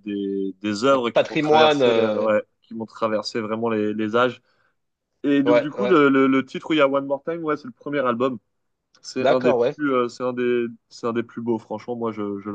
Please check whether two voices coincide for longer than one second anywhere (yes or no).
yes